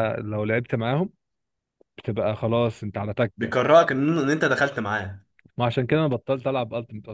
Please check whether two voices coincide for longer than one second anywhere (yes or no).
no